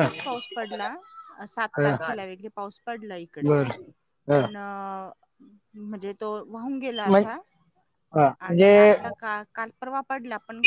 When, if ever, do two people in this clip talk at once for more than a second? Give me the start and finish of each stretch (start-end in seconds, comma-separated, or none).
none